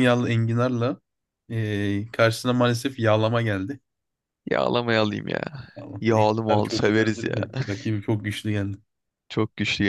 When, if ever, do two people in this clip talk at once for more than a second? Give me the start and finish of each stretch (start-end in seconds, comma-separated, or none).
6.0-7.4